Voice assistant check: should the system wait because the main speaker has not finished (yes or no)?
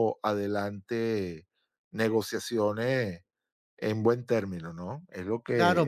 no